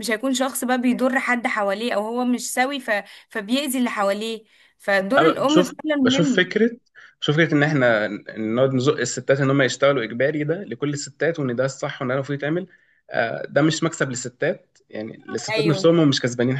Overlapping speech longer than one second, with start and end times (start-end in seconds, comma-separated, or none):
5.2-6.5